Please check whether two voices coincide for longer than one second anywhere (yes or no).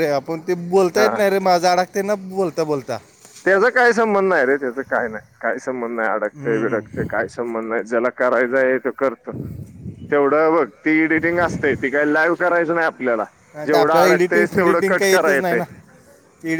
yes